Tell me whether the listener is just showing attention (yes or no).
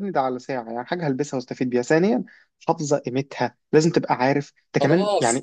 no